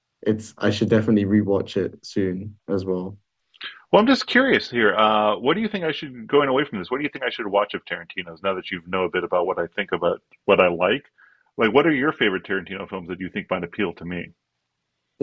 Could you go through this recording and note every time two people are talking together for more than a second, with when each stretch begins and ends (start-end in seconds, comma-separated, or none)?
none